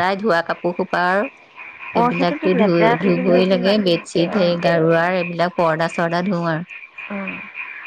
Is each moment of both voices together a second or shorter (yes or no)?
no